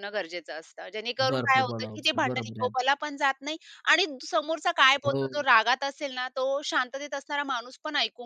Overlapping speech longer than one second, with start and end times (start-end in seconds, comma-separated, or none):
1.3-2.9